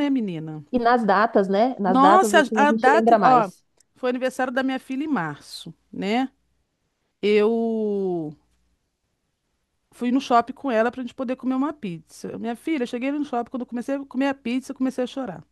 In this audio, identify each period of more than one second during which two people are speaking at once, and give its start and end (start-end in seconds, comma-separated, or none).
1.8-3.5